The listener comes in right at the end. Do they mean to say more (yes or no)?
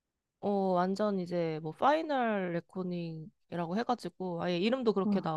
no